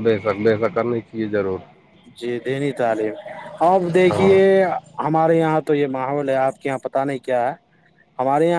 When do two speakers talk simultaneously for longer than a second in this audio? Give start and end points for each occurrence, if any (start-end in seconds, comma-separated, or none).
none